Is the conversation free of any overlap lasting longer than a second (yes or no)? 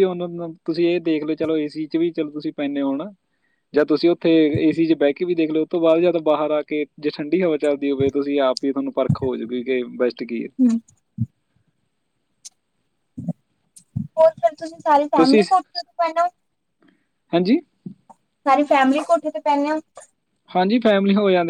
yes